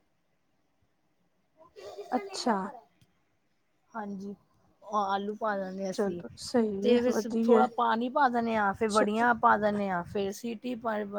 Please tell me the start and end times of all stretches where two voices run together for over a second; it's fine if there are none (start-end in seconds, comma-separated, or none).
5.9-7.6